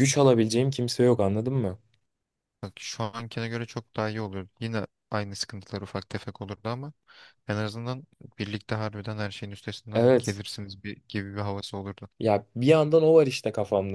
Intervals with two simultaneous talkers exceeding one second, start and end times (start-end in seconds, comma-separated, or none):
none